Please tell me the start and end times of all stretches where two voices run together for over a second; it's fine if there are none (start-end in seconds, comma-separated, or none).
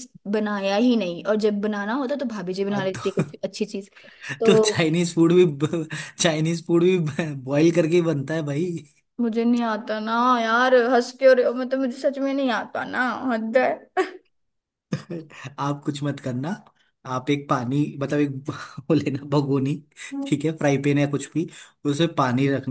none